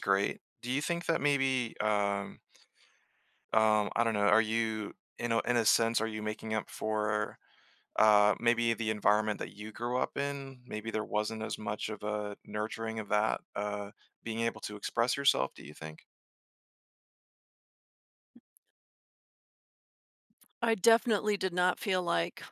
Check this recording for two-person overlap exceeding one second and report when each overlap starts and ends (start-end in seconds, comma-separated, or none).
none